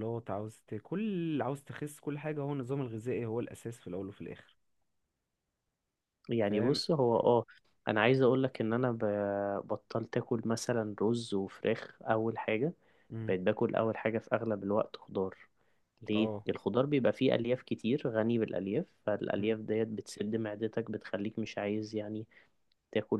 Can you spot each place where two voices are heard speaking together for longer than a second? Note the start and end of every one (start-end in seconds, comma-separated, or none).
none